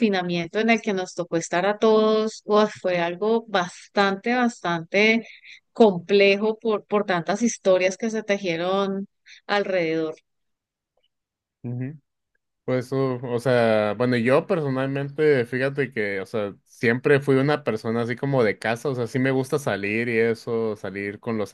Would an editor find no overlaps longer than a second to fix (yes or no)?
yes